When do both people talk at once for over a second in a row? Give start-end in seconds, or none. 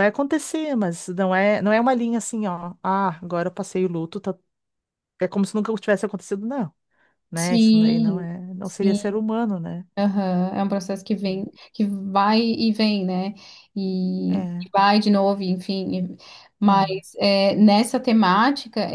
7.3-9.2